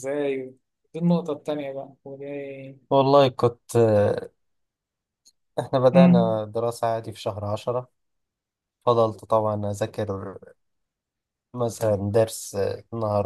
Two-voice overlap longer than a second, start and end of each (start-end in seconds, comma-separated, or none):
none